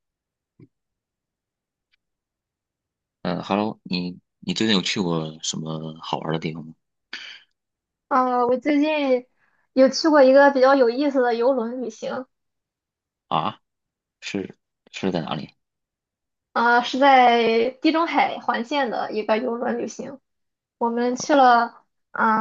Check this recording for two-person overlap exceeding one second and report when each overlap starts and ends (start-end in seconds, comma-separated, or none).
none